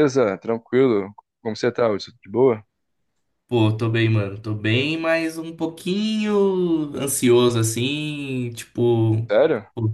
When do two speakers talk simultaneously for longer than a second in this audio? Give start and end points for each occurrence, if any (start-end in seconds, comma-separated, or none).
none